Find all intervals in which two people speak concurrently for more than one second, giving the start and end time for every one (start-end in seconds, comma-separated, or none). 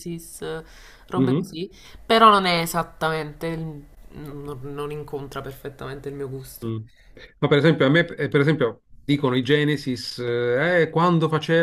none